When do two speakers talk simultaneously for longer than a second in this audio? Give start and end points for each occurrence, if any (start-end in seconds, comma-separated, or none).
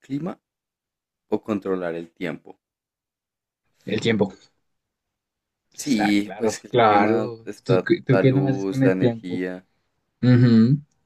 5.8-9.4